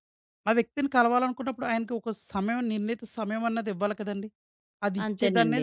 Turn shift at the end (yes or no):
yes